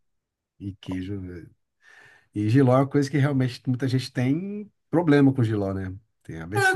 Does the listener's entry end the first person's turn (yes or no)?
yes